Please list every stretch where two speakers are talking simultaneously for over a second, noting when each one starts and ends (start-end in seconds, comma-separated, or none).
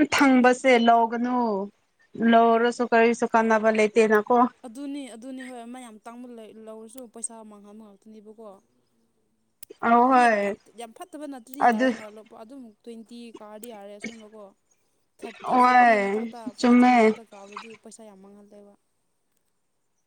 15.4-17.1